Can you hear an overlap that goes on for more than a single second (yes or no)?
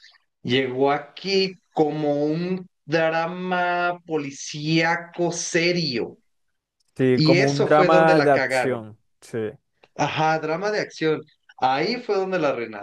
yes